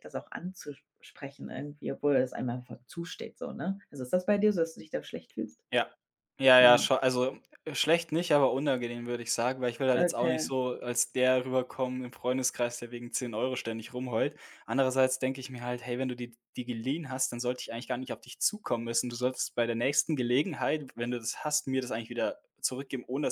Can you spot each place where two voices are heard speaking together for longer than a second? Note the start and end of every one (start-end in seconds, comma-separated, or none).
none